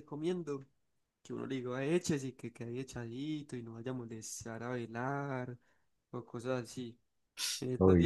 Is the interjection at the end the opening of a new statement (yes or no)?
no